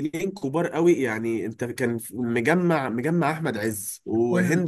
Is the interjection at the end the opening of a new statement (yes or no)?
no